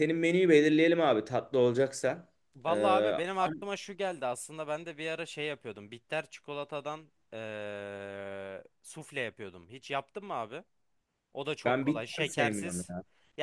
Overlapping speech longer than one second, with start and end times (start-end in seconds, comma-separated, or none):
11.7-12.9